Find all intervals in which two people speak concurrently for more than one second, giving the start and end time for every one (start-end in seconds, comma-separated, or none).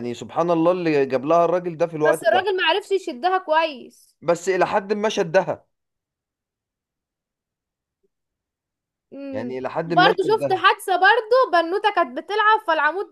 9.3-10.6